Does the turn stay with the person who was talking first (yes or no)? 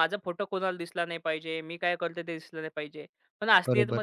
yes